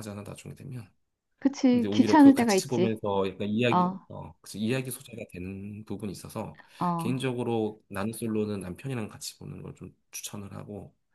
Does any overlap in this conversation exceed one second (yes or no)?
yes